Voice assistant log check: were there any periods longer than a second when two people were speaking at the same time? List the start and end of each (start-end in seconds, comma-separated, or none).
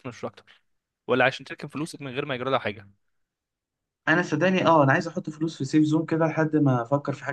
none